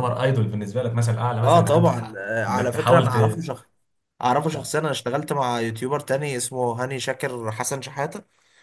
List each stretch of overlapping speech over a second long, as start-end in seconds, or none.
1.4-3.2